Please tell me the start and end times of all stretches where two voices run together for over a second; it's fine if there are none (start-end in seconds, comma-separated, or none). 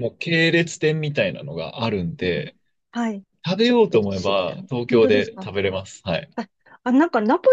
3.6-5.5